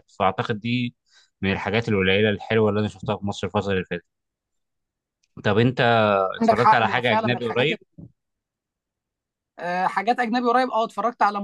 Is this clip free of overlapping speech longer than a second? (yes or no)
no